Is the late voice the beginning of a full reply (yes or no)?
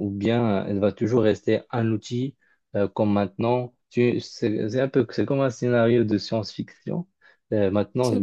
no